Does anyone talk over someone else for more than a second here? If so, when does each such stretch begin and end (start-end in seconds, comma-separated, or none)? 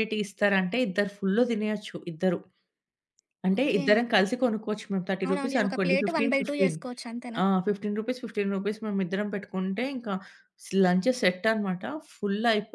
5.2-6.8